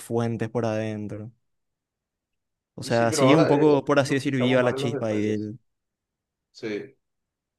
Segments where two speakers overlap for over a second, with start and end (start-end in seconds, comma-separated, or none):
2.8-5.5